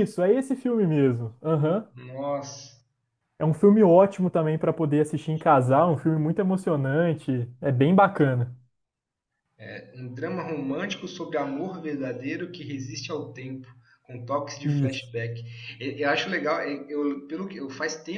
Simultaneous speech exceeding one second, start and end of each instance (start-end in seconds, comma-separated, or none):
none